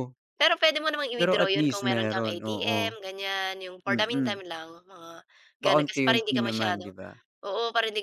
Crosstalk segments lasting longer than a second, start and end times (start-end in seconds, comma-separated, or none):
1.2-2.8, 5.6-6.9